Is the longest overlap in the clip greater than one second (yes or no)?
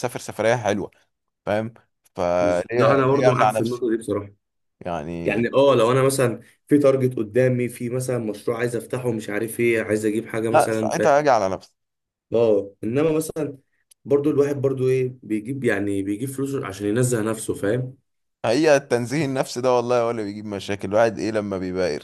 yes